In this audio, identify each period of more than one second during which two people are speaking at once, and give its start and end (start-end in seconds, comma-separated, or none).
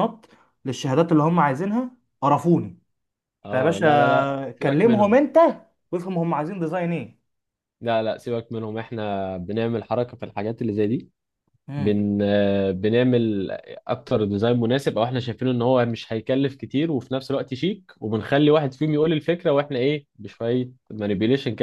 3.5-5.2